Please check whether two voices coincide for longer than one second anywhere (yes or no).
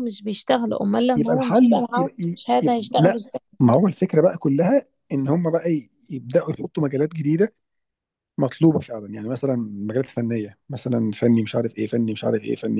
yes